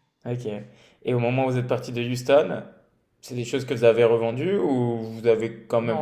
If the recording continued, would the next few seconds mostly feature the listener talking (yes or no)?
yes